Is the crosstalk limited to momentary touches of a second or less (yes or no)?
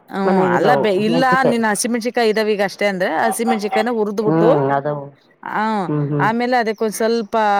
yes